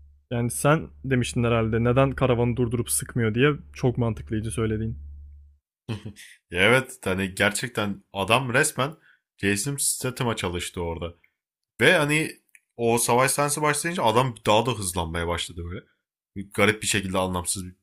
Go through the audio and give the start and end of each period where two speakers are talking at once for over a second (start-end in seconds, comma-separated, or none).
none